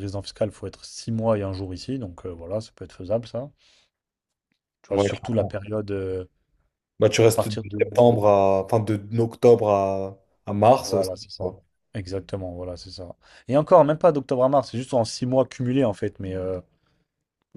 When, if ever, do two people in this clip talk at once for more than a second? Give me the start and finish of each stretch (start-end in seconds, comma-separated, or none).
none